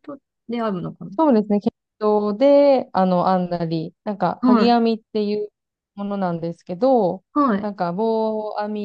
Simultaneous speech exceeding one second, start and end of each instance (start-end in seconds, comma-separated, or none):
none